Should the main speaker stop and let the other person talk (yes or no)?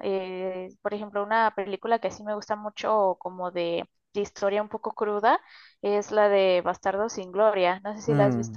yes